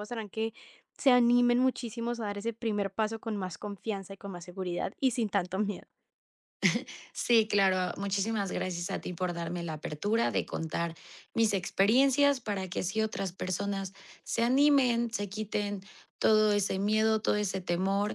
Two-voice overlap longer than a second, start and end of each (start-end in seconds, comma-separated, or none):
none